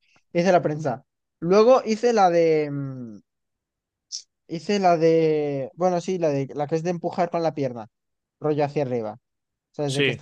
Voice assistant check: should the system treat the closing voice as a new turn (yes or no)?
no